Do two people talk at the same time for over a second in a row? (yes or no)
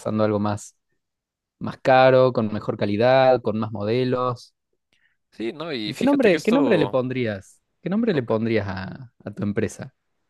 yes